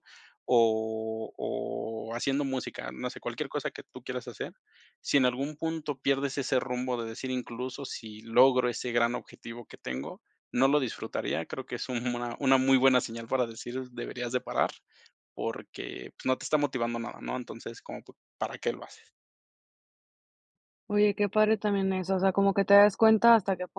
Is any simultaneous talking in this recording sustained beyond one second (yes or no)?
no